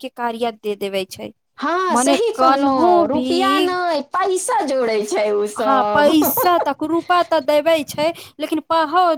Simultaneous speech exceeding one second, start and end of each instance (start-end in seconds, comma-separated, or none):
none